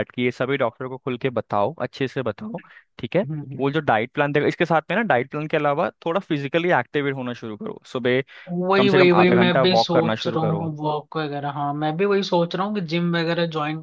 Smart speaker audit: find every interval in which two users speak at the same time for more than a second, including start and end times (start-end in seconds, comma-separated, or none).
8.8-10.7